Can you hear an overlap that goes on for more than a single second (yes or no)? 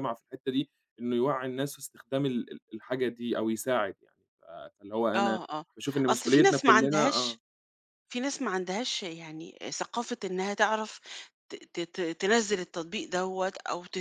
yes